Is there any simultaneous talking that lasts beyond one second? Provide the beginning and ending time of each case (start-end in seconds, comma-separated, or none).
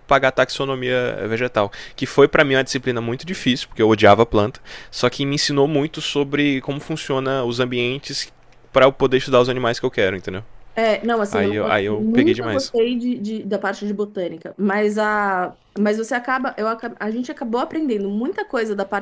11.3-12.7